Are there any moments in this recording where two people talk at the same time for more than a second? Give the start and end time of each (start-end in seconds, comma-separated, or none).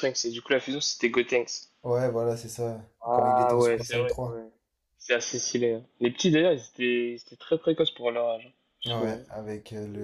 3.0-4.4